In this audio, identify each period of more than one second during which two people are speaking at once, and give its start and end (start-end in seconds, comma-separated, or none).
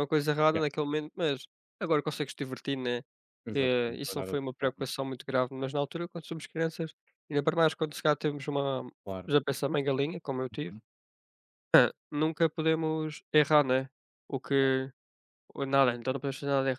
3.5-4.9